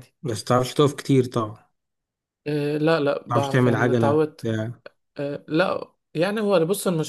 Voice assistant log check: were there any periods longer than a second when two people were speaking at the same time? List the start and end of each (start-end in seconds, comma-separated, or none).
3.3-4.5